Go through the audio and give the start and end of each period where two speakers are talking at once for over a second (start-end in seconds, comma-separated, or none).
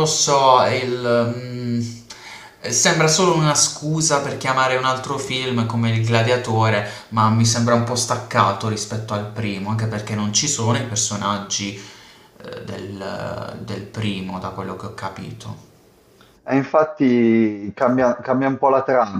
none